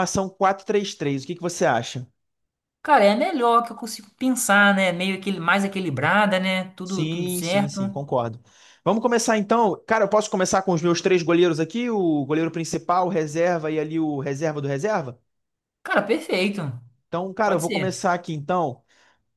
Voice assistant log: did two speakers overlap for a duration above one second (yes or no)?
yes